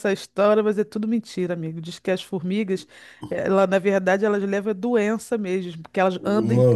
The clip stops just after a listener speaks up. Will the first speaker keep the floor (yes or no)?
no